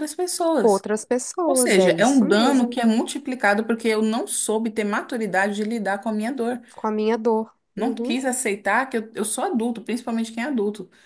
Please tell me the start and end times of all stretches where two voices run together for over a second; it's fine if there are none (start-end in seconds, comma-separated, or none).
1.4-2.8